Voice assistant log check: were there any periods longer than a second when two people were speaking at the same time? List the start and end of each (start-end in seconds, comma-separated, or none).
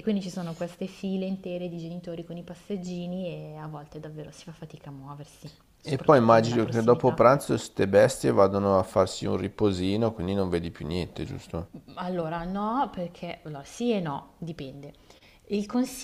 5.8-7.2